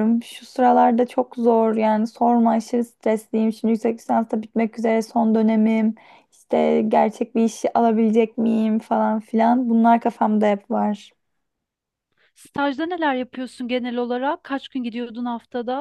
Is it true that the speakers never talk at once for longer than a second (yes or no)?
yes